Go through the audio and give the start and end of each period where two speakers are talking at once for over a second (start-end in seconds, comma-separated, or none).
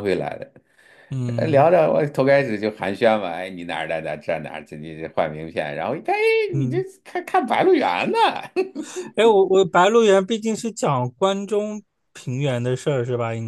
none